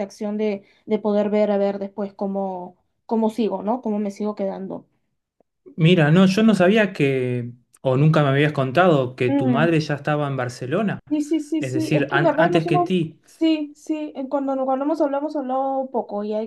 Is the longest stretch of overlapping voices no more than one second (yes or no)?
no